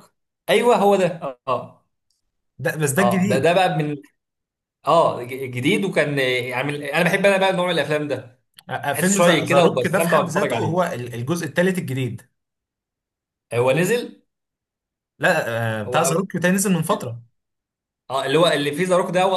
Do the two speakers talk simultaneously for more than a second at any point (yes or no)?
yes